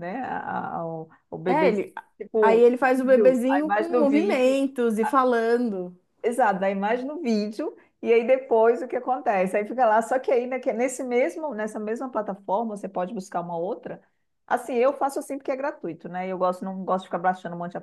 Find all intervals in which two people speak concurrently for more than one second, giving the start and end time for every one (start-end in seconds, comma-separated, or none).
2.4-4.6